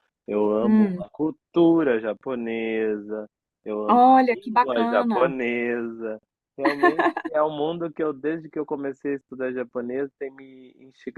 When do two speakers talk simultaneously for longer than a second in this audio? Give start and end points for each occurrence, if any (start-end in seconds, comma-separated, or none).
3.9-5.3